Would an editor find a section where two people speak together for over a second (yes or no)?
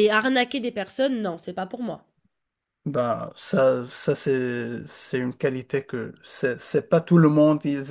no